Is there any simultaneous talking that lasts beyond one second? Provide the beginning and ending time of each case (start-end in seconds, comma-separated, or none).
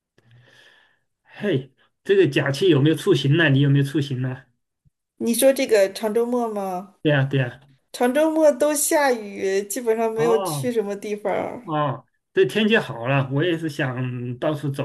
none